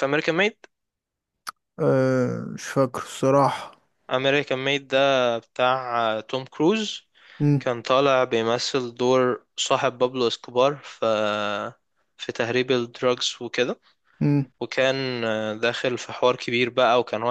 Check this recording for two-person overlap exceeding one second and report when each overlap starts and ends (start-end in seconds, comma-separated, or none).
none